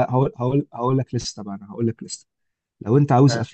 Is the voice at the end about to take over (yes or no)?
no